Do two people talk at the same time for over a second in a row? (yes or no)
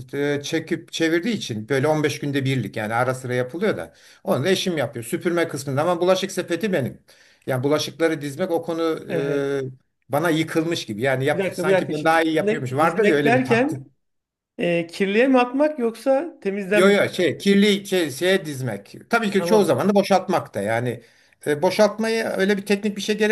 yes